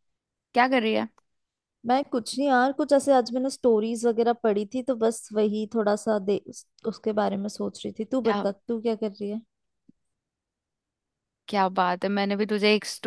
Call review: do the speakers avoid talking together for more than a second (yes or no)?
yes